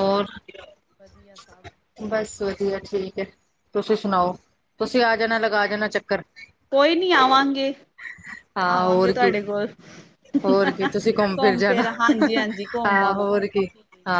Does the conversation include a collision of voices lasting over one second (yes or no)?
no